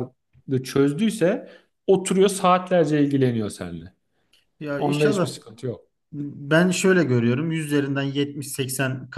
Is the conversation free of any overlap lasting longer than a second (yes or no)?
yes